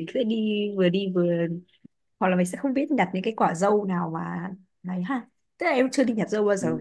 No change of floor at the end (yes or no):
yes